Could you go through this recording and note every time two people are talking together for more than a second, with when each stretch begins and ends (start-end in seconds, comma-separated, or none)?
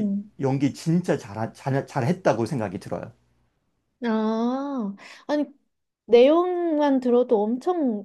none